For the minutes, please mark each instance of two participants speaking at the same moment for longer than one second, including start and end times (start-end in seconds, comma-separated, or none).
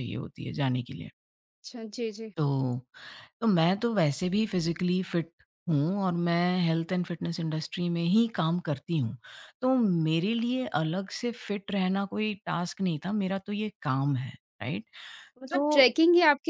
none